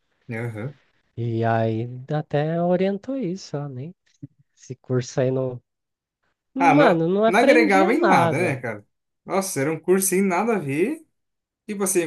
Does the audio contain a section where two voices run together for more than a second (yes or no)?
yes